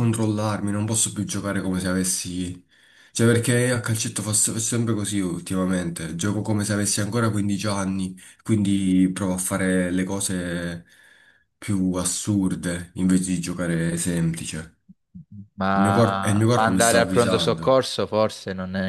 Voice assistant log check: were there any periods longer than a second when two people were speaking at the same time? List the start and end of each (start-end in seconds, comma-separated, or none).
15.7-17.8